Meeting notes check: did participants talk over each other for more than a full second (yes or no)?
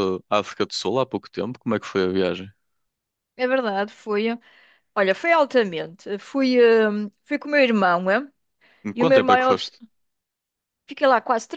no